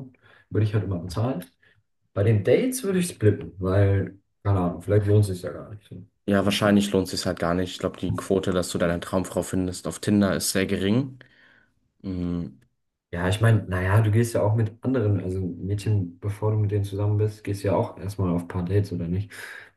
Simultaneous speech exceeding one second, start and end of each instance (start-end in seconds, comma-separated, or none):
none